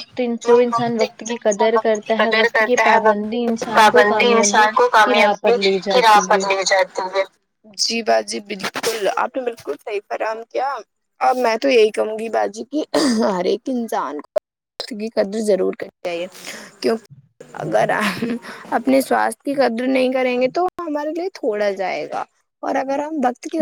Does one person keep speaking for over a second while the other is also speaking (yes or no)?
yes